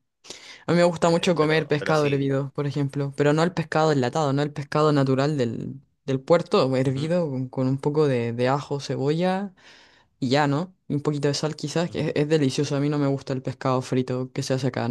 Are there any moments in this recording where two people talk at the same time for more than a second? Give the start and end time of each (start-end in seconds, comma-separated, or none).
1.1-2.3